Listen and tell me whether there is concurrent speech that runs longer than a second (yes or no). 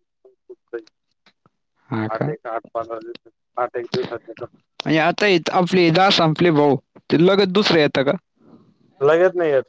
no